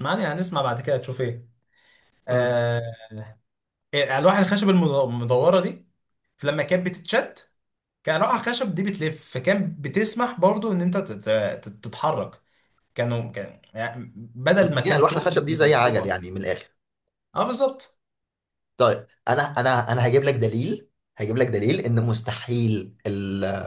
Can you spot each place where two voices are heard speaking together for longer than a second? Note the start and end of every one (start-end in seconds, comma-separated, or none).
14.6-16.2